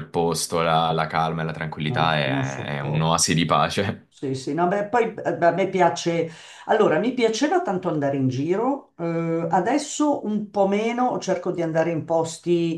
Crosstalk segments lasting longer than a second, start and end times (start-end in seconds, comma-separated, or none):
1.9-3.2